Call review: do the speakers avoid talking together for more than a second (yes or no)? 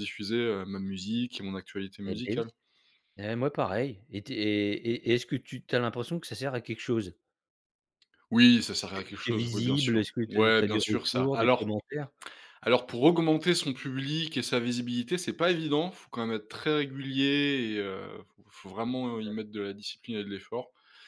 no